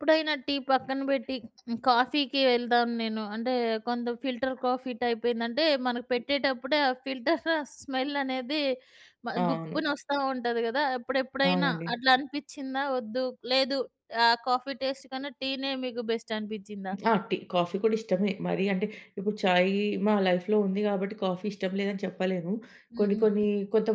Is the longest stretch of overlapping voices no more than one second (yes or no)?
yes